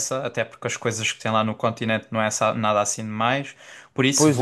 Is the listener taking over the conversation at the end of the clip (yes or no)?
yes